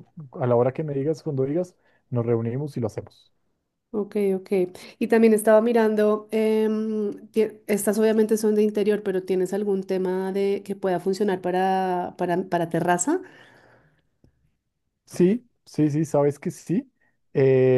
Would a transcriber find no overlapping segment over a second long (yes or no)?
yes